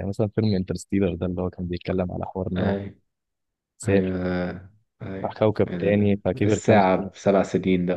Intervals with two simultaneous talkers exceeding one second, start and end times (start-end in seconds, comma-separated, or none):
5.2-7.1